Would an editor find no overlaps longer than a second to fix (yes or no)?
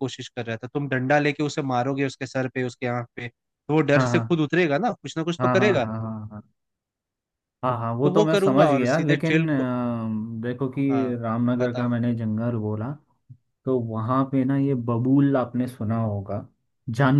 no